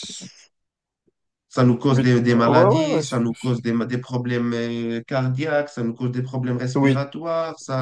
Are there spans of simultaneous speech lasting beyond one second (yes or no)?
yes